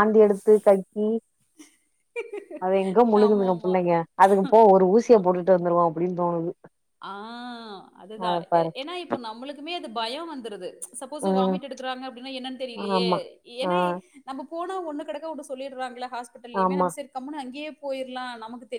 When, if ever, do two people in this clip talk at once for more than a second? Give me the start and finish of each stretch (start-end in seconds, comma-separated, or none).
none